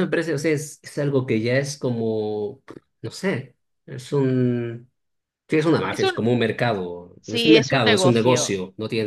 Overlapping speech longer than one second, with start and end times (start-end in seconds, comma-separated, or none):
7.2-8.5